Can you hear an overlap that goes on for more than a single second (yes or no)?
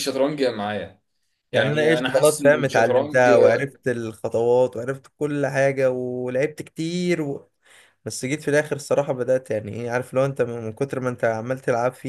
yes